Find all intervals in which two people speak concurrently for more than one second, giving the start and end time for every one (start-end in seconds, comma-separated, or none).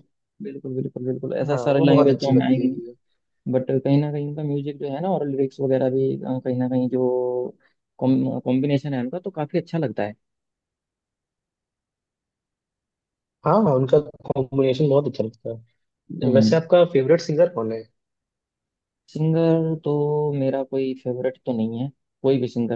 1.5-2.9